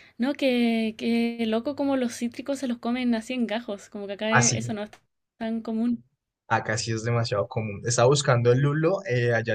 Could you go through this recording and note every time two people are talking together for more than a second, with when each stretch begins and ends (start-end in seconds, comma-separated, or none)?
none